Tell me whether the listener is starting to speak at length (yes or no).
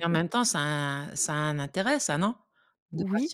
yes